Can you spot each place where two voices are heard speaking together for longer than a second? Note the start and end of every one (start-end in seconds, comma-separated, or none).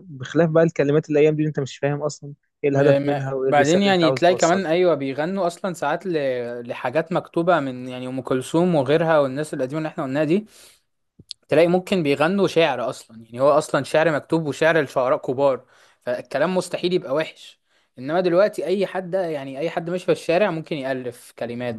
2.7-4.6